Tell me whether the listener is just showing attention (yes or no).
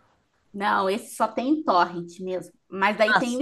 yes